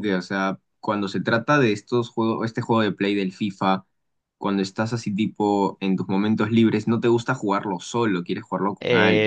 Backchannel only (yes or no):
no